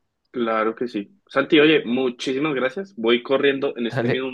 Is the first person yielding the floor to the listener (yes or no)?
no